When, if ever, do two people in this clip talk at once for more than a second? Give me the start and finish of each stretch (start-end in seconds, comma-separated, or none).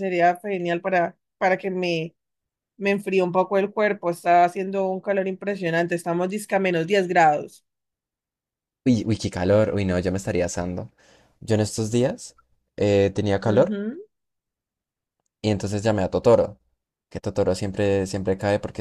none